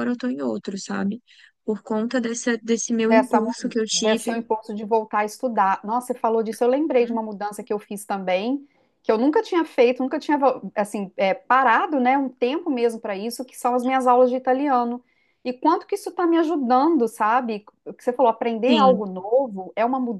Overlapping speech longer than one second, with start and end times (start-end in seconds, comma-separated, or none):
3.1-4.4